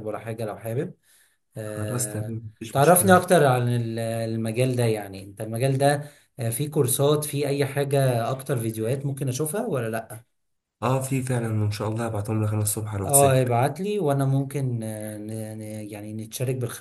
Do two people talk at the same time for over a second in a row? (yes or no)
yes